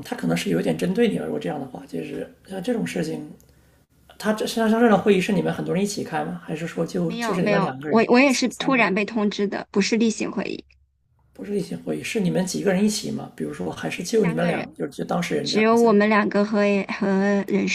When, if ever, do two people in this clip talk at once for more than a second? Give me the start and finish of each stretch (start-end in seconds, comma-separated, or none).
7.0-8.9